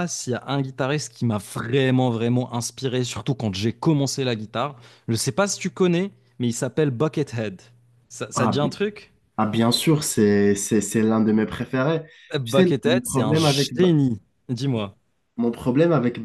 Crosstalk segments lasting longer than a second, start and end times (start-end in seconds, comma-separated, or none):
12.4-13.9